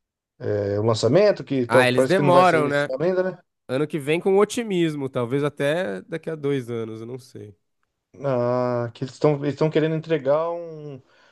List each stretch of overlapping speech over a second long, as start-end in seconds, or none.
1.7-2.9